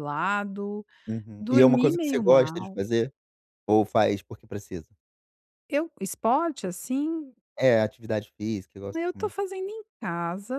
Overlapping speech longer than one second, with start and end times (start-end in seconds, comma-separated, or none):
1.4-2.8